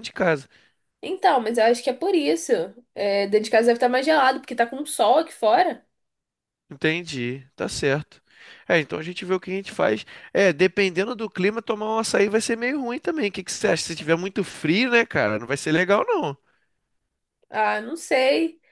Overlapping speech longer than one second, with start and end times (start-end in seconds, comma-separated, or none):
none